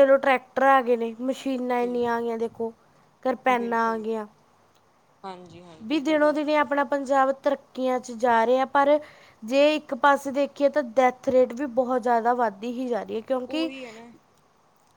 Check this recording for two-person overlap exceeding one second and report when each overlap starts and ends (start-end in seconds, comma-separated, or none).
none